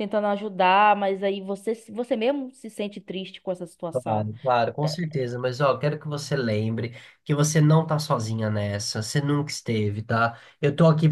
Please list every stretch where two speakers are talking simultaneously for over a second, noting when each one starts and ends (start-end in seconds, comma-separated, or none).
none